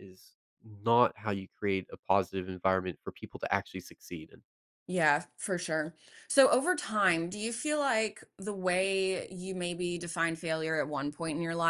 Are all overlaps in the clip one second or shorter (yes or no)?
yes